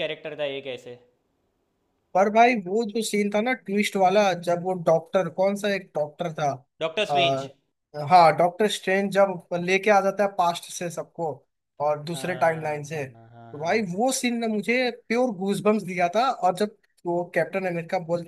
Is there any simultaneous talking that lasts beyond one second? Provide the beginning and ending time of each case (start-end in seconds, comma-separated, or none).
12.1-13.8